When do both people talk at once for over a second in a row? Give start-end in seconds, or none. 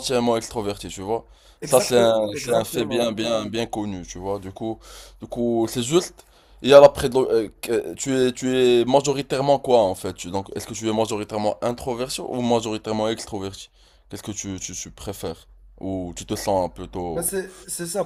1.7-3.1